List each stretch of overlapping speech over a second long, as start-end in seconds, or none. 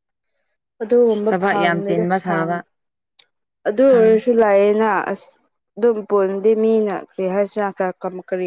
1.1-2.6